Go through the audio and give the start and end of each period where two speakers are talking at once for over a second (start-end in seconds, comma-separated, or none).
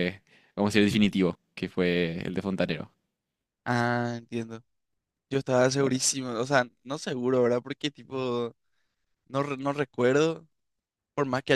none